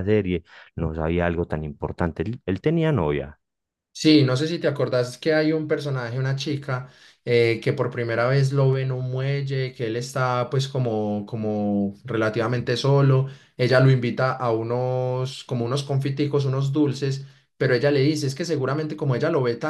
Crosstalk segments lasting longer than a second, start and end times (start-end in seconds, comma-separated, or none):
none